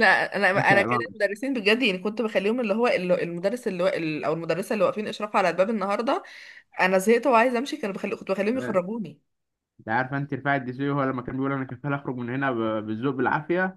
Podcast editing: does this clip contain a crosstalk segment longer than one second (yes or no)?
no